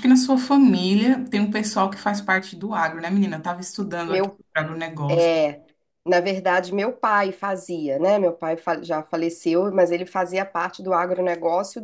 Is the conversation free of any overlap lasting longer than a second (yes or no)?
yes